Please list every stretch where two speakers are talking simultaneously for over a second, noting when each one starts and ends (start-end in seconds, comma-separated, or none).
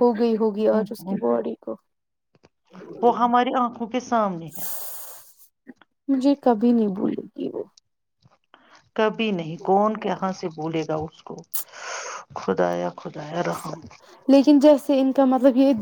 none